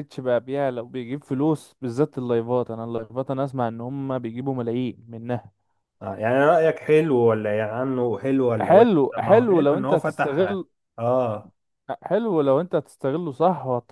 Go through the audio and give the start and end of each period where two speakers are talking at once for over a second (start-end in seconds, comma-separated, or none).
8.6-10.5